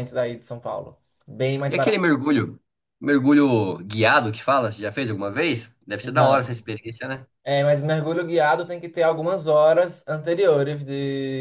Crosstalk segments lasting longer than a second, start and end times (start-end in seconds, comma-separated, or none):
none